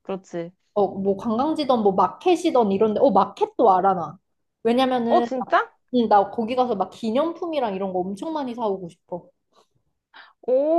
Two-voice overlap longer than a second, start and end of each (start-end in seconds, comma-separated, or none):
none